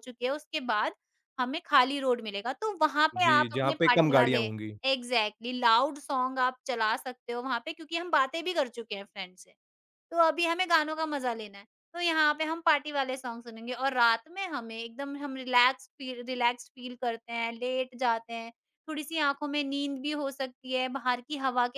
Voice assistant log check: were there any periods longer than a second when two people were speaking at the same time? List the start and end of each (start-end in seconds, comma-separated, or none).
3.2-4.4